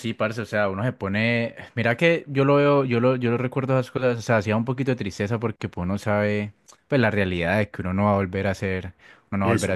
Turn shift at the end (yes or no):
no